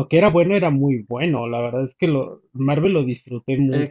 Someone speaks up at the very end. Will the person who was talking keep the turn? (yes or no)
no